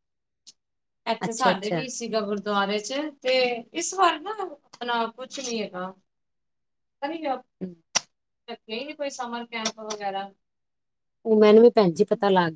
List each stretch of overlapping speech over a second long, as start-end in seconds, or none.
none